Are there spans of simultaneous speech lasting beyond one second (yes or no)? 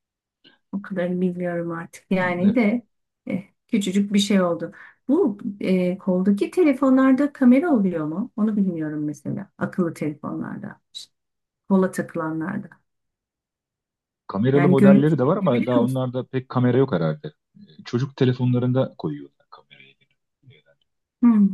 yes